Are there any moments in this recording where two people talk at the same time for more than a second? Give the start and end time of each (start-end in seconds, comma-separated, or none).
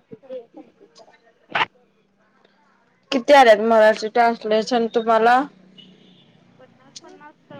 none